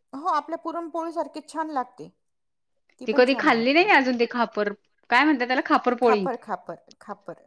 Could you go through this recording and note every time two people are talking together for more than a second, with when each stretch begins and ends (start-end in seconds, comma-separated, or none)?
3.2-4.7